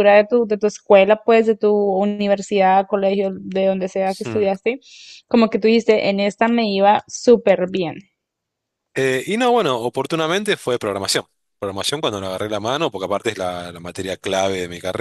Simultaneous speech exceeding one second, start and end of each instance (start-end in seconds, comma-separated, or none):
none